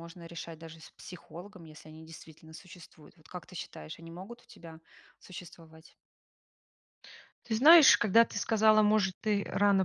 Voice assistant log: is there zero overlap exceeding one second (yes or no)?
yes